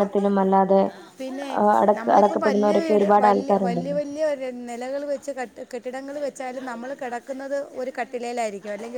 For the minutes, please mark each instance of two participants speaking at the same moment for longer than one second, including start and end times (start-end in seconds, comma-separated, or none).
2.0-4.0